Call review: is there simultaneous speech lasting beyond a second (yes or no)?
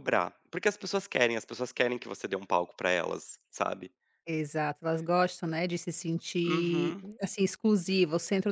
no